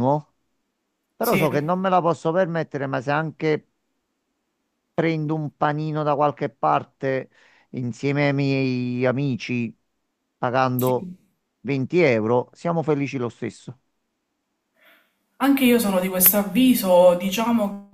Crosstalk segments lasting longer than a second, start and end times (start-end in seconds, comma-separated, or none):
none